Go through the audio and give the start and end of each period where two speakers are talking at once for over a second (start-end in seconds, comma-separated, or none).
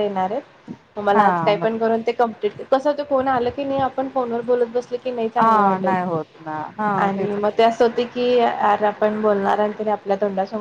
none